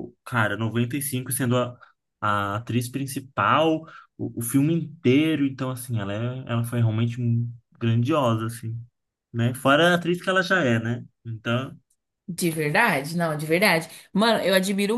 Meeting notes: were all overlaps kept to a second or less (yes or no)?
yes